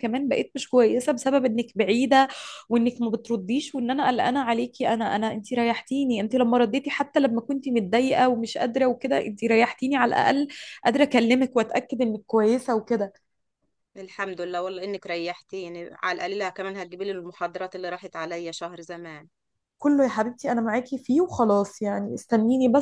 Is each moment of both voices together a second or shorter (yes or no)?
yes